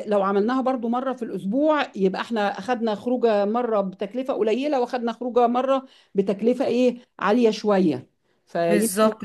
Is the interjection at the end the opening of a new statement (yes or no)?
yes